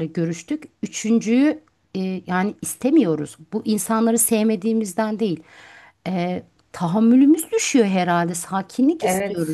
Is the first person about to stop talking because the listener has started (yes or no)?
yes